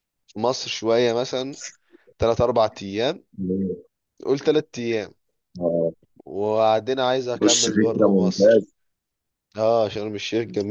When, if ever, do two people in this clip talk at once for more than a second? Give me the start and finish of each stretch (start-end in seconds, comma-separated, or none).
7.3-8.7